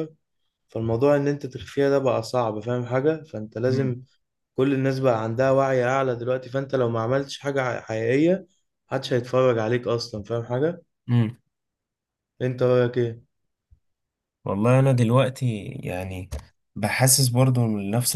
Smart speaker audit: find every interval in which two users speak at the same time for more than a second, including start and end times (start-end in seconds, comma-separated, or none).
none